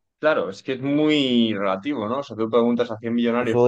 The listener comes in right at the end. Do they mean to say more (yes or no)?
no